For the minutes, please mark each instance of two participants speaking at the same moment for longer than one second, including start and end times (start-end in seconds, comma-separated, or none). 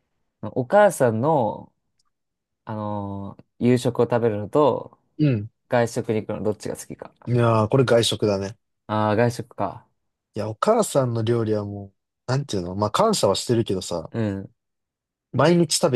none